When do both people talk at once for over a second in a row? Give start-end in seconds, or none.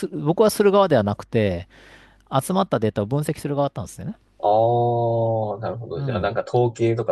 none